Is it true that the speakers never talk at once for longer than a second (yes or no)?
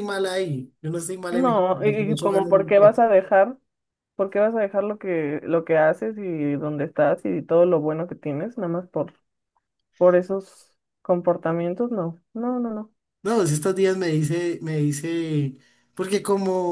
no